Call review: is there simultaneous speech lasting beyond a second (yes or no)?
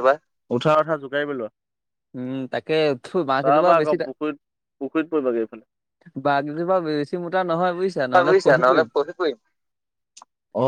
no